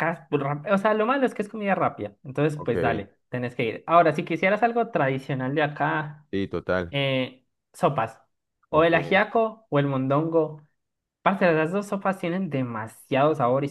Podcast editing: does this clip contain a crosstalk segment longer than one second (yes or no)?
no